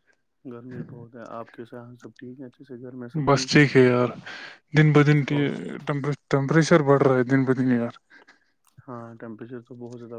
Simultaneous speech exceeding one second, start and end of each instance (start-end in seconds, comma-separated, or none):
none